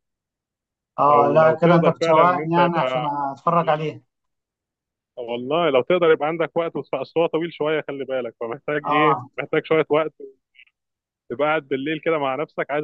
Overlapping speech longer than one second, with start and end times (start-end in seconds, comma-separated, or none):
1.1-3.1